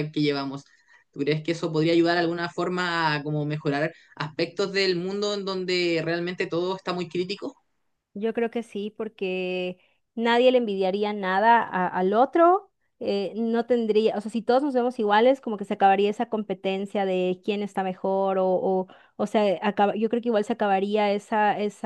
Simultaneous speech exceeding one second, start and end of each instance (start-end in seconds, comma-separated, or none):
none